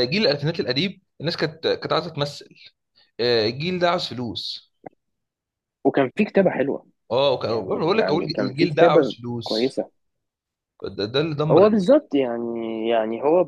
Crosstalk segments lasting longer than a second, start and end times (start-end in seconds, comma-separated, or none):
7.5-9.8